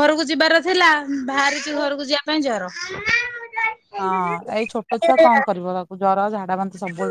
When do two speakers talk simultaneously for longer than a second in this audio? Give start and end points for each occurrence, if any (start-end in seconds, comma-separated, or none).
none